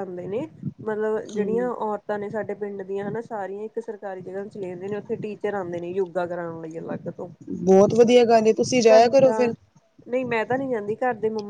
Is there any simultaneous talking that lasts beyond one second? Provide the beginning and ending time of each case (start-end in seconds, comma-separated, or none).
none